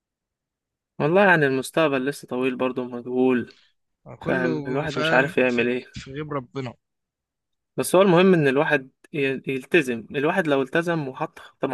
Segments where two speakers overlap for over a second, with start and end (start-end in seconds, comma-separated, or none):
4.2-5.8